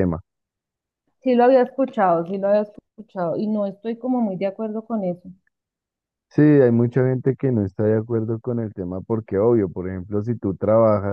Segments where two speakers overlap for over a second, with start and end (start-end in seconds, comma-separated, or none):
none